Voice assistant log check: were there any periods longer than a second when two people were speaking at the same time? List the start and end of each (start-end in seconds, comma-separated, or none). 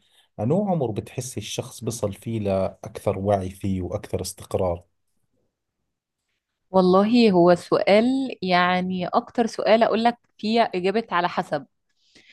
none